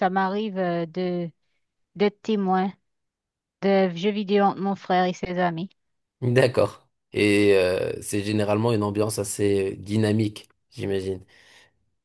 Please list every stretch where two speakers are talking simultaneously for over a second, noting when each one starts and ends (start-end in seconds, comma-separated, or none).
none